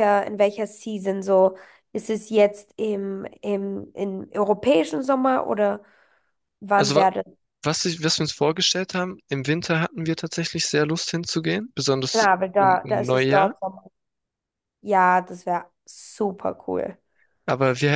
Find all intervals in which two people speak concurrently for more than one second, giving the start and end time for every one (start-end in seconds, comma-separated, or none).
12.1-13.5